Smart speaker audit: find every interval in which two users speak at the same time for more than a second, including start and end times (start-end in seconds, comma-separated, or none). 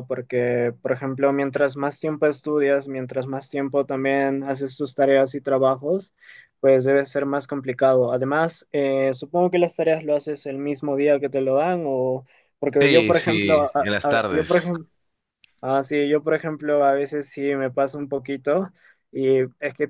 12.8-14.8